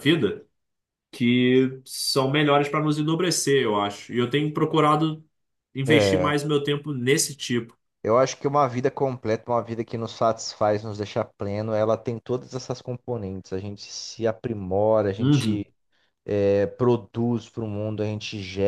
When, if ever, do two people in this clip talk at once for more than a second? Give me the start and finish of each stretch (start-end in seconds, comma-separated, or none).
none